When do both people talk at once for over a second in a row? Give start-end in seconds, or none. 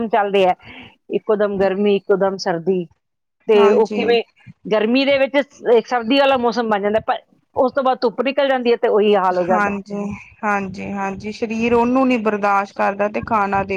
none